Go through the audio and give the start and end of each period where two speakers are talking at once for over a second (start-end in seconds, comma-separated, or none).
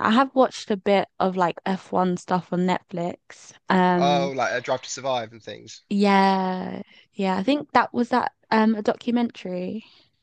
none